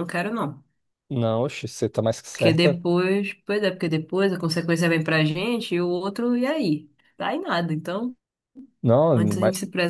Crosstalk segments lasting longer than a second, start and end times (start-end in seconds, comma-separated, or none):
none